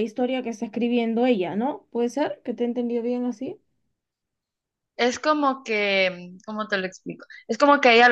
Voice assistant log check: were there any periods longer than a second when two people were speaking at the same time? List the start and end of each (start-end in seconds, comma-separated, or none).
none